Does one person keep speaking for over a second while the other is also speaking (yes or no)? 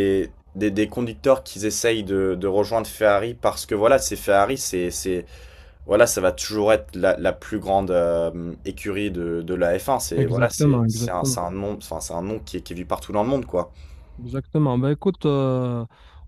yes